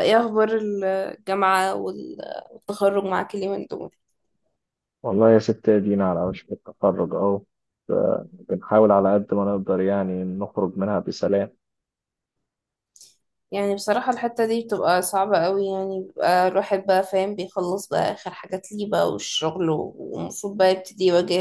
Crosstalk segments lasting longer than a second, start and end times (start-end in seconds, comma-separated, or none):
none